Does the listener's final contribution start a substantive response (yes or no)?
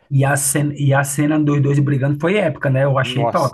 yes